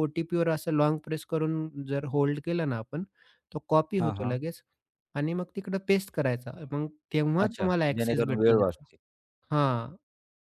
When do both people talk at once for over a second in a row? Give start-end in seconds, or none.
7.5-8.8